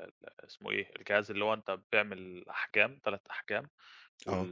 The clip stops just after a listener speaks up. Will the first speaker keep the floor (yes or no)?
yes